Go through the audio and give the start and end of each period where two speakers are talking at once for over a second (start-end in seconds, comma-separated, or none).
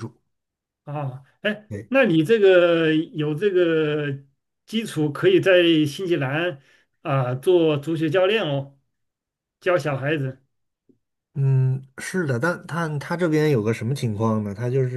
none